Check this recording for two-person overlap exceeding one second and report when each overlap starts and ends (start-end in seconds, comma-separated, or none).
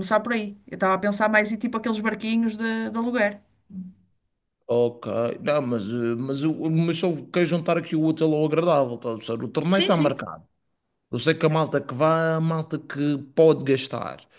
none